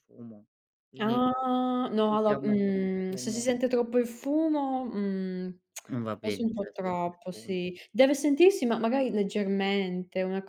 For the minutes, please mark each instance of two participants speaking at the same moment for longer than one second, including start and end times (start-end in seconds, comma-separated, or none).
2.0-3.5, 6.2-7.6